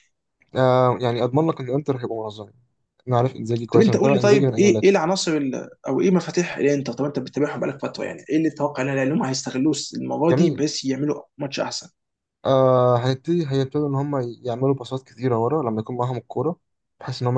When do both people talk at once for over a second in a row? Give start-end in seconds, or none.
3.7-5.0